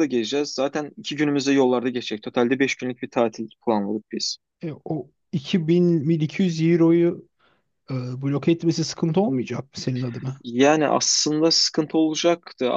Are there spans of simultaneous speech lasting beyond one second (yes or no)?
no